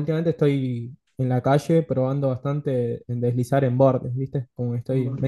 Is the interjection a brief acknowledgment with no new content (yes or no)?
yes